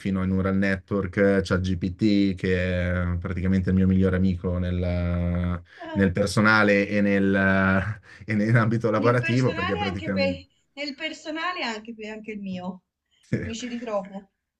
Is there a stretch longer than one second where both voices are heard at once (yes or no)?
yes